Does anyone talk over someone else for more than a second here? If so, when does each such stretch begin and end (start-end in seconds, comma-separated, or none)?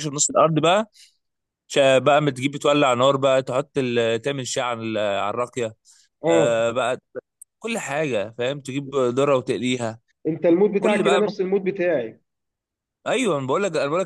none